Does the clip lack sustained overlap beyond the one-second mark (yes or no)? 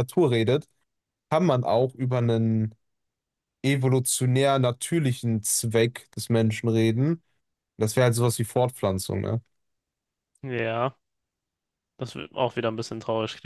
yes